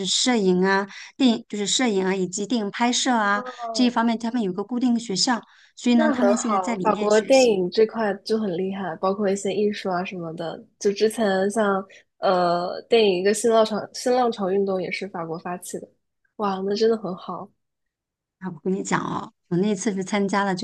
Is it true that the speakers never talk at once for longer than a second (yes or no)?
no